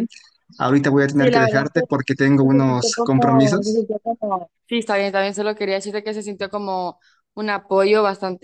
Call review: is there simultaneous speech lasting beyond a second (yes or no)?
yes